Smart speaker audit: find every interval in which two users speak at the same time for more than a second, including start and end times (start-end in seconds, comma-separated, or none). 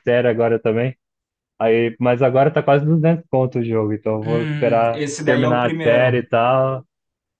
4.2-6.2